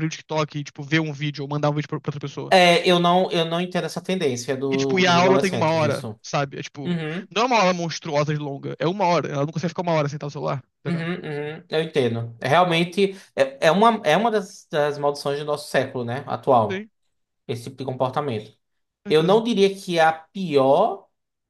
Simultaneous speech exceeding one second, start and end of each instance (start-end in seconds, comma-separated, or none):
4.7-6.2